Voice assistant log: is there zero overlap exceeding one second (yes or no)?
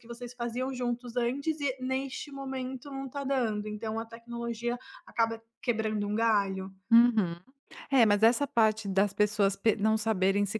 yes